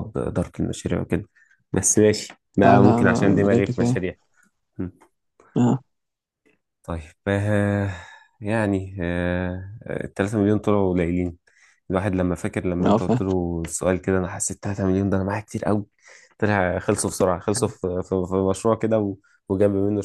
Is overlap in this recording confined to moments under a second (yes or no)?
no